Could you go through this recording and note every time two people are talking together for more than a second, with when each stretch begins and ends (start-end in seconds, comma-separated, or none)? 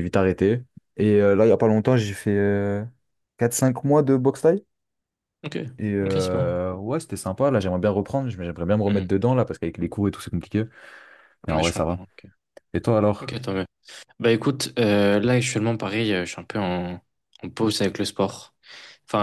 none